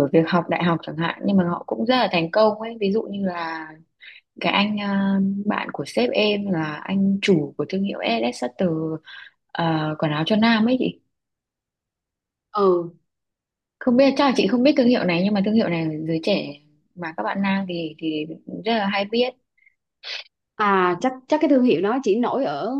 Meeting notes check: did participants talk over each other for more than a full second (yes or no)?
no